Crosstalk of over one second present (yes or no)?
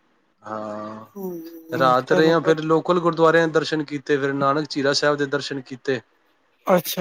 yes